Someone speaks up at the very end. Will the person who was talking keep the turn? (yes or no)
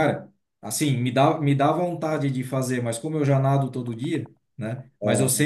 yes